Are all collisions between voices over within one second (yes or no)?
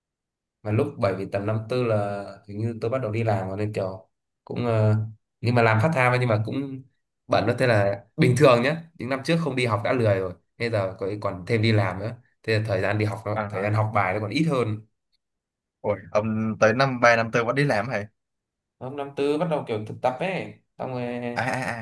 yes